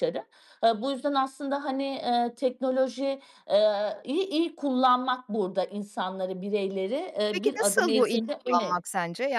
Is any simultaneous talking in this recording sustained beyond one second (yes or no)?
yes